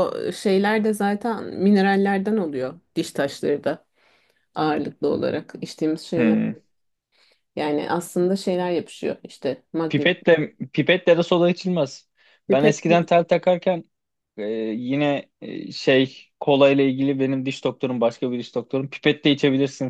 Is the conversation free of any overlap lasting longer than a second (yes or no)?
yes